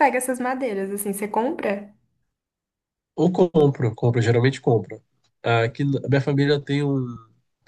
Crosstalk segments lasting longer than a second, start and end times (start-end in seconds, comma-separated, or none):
none